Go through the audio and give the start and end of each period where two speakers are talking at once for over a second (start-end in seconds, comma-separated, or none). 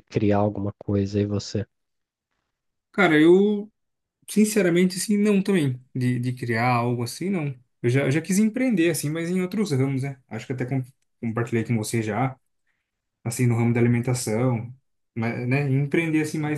none